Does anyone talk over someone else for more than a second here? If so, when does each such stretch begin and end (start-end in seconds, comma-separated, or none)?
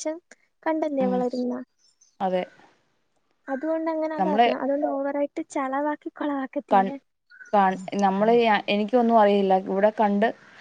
none